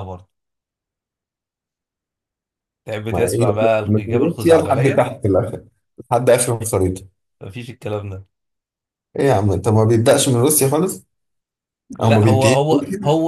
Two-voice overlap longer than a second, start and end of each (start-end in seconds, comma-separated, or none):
3.1-5.1